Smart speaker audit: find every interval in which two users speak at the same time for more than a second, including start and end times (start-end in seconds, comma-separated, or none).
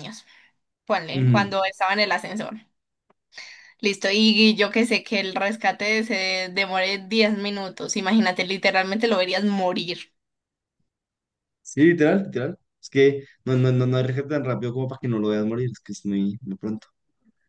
none